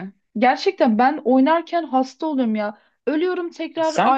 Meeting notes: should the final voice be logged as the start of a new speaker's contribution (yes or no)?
no